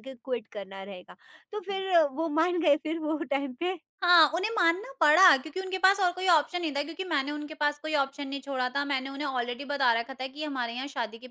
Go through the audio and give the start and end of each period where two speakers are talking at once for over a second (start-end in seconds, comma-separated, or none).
none